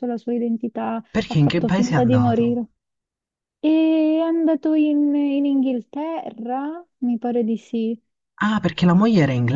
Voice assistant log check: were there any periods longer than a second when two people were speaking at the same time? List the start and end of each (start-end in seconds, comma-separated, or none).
1.1-2.6